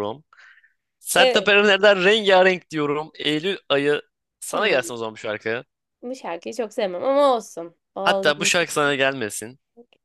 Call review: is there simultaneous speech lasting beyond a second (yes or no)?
no